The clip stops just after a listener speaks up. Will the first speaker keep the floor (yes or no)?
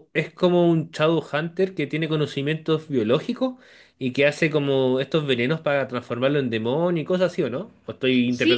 no